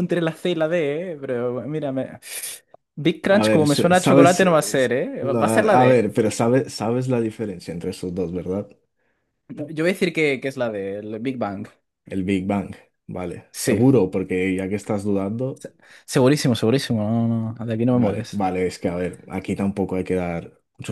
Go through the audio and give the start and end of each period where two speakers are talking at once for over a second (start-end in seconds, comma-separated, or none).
3.3-6.0